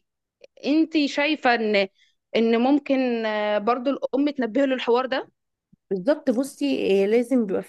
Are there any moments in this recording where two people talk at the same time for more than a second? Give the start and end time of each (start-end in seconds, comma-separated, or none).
none